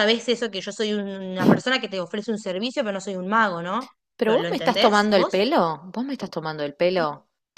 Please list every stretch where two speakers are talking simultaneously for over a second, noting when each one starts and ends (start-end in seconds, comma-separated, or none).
4.2-5.5